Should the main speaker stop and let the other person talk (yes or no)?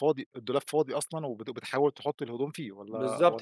yes